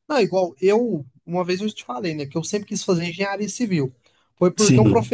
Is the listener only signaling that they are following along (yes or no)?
yes